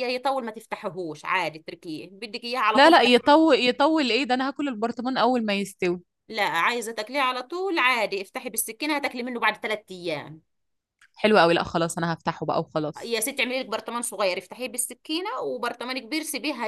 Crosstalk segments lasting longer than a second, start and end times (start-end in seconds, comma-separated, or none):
none